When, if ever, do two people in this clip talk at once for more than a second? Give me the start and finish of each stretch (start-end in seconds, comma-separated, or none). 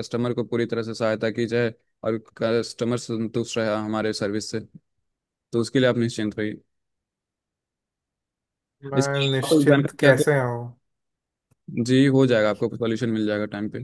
9.0-10.3